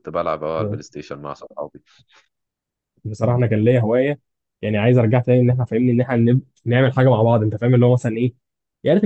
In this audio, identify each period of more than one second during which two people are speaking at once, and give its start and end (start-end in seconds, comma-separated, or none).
none